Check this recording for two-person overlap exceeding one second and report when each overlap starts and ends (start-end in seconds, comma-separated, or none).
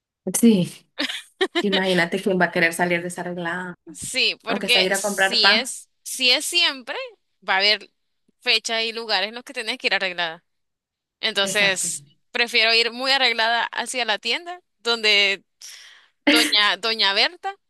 4.5-5.7